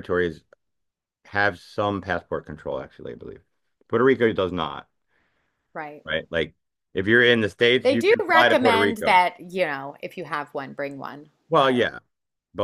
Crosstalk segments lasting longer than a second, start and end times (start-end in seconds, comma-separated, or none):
7.8-9.2